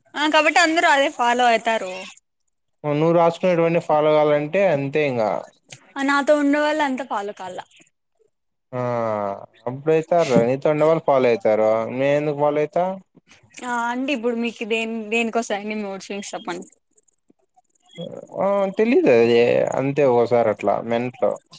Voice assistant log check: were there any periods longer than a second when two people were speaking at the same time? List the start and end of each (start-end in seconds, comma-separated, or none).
none